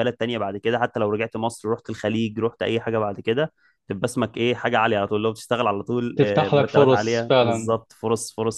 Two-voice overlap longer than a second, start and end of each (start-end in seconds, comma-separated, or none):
6.2-7.7